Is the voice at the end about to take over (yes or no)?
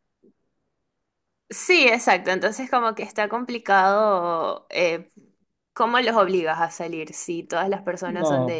yes